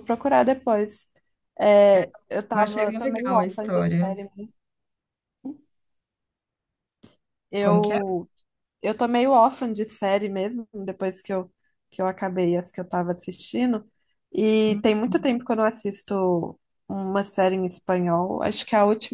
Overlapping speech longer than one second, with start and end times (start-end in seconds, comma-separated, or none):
2.5-4.2